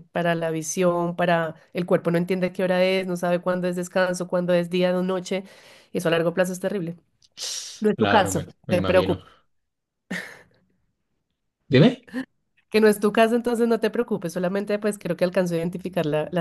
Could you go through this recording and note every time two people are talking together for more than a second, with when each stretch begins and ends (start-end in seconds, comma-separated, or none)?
8.0-9.2